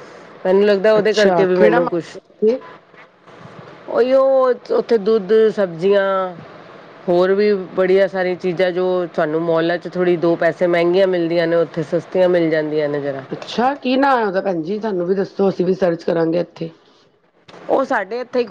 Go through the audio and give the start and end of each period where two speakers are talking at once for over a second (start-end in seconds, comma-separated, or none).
1.0-2.2